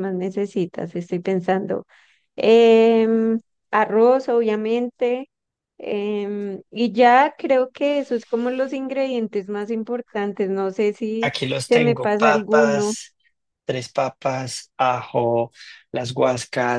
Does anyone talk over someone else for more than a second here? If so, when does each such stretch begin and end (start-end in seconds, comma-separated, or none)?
11.2-12.9